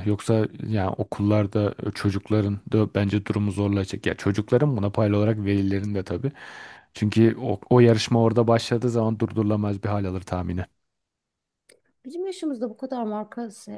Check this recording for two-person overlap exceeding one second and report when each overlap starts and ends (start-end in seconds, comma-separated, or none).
none